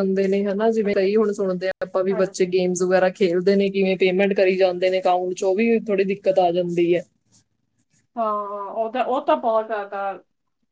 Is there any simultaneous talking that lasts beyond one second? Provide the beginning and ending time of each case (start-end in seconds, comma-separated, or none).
none